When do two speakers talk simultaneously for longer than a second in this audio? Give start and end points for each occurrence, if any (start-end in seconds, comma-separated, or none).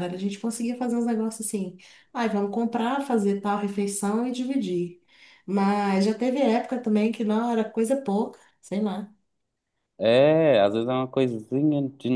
none